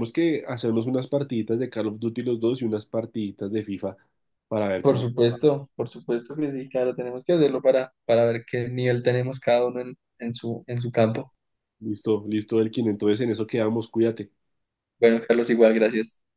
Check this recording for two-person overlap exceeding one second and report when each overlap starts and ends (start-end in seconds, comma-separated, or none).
none